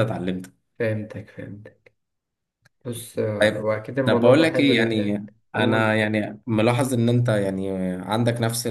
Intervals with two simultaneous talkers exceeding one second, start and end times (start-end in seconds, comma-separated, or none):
3.4-6.1